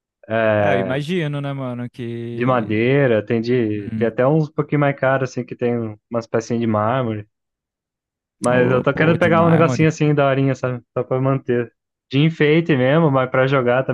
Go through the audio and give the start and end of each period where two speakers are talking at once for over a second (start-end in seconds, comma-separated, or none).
8.5-9.9